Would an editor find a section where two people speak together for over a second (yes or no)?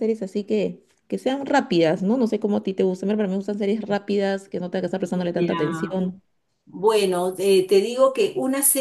no